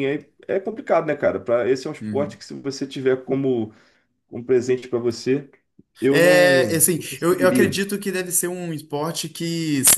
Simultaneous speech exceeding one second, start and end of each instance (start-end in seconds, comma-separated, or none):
6.1-7.8